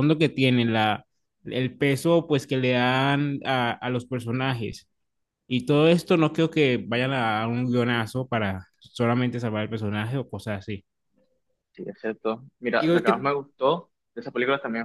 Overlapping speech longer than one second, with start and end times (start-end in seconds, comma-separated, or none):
none